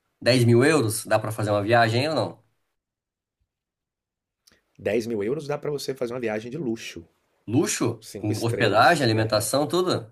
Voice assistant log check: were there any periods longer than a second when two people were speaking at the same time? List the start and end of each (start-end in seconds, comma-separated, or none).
8.0-9.5